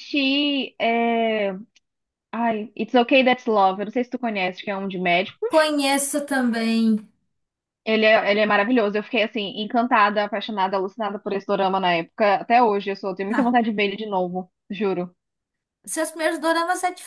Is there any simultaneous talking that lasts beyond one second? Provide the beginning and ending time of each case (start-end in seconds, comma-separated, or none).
none